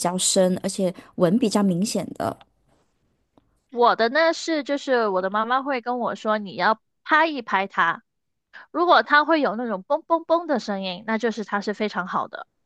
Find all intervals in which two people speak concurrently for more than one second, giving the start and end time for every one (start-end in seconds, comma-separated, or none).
none